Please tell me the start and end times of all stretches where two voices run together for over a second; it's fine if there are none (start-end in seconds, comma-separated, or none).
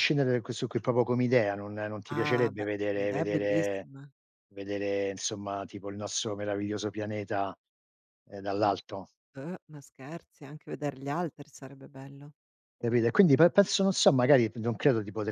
2.1-3.8